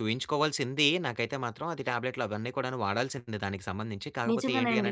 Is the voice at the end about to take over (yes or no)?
no